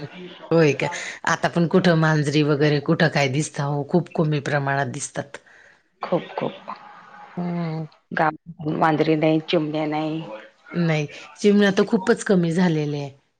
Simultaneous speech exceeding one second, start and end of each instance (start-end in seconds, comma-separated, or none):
none